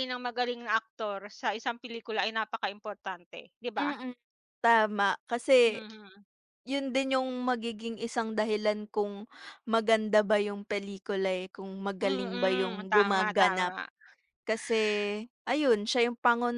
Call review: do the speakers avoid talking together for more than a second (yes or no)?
no